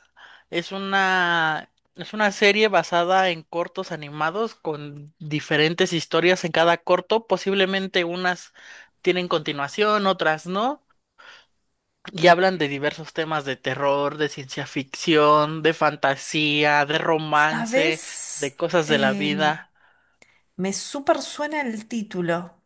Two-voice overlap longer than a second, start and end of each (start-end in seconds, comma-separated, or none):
17.3-19.3